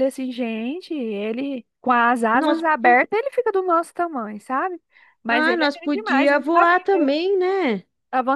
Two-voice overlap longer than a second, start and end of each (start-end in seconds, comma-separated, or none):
5.3-6.8